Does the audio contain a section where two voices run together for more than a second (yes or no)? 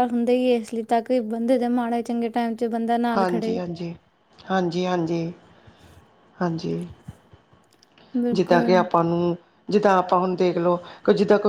no